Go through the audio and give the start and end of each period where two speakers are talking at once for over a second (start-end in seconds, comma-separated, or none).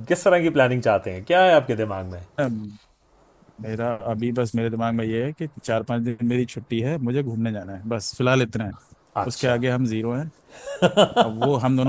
none